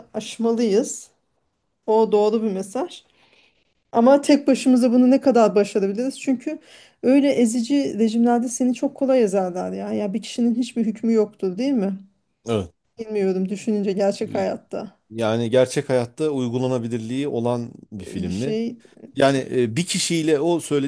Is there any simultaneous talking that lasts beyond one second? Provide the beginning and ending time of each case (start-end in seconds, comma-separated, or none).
none